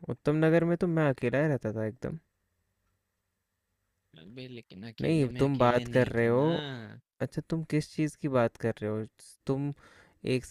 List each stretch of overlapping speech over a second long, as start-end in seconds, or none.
5.0-6.5